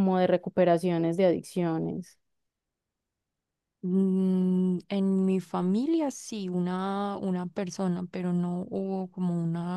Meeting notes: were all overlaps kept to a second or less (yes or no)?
yes